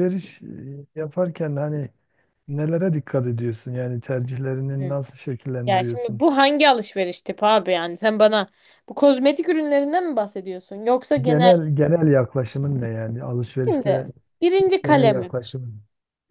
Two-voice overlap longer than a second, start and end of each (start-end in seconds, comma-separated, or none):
none